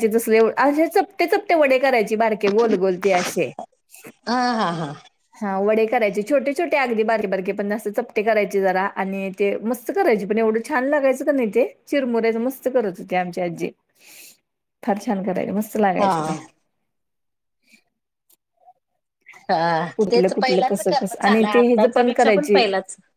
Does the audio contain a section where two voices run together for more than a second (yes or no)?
yes